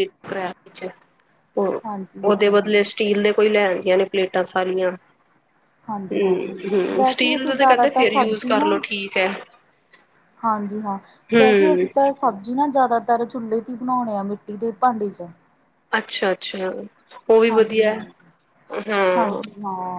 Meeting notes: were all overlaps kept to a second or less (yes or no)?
no